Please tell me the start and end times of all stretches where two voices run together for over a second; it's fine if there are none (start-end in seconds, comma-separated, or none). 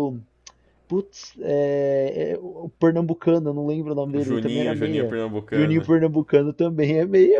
4.1-5.9